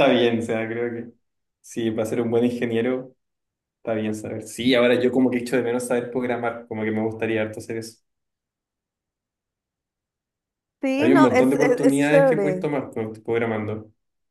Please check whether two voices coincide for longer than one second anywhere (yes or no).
yes